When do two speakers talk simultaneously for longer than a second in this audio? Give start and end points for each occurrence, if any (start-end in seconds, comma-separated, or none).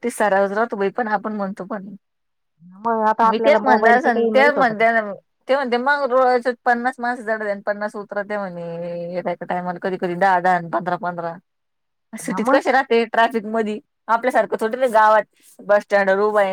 3.3-4.8